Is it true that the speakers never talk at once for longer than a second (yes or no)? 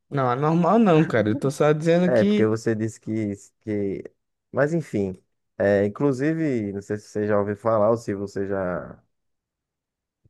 yes